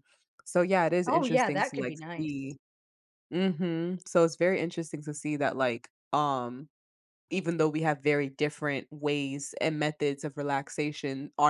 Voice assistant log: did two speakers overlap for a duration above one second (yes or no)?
yes